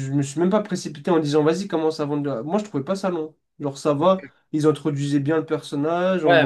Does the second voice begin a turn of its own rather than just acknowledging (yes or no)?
yes